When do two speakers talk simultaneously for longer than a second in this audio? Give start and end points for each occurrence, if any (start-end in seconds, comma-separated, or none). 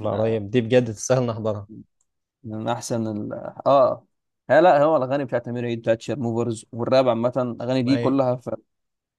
none